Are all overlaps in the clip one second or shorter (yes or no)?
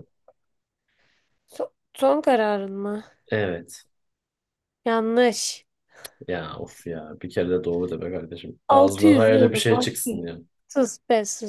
no